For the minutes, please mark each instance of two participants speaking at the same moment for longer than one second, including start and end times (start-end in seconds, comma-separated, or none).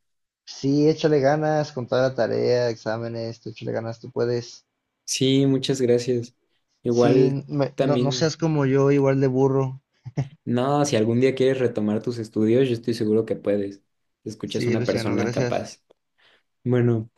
6.9-8.3, 14.4-15.7